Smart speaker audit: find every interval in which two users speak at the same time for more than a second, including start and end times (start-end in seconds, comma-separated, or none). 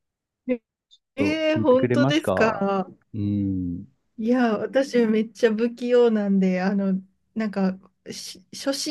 1.2-2.7